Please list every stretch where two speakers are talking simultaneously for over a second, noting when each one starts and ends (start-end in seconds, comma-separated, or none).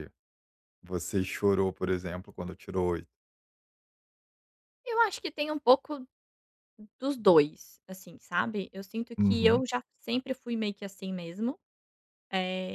none